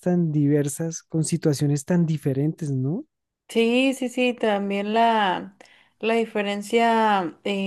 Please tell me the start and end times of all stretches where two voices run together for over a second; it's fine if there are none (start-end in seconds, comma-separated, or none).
none